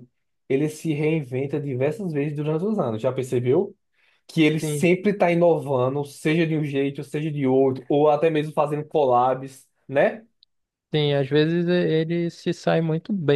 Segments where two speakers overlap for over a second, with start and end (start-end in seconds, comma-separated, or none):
none